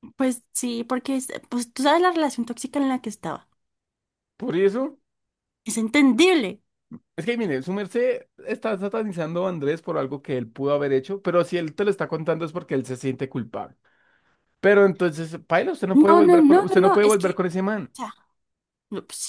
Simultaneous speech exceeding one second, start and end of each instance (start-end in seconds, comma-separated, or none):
15.9-17.4